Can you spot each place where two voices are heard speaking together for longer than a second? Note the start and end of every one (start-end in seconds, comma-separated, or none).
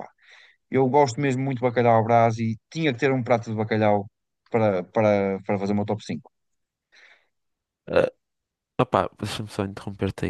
none